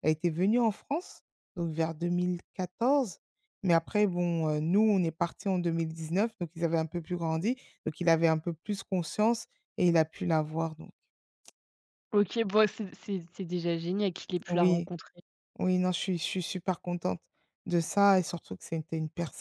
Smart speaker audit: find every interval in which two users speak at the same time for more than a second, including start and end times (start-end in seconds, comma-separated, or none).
none